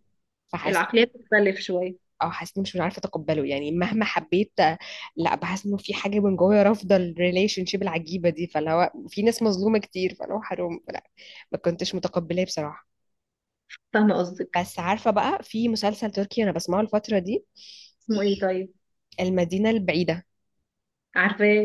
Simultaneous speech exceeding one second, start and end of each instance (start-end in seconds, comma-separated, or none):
none